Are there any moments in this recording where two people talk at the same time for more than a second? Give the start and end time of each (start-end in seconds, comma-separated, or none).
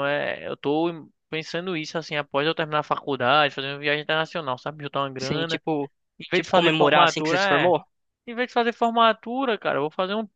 6.3-7.7